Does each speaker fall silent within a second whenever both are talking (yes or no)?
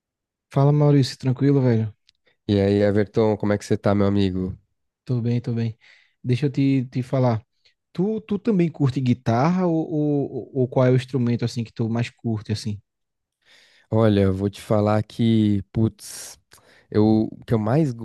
yes